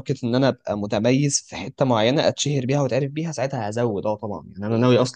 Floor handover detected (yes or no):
no